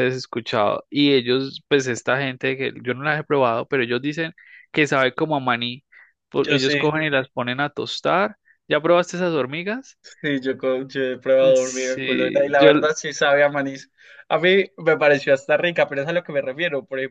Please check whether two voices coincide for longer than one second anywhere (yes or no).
yes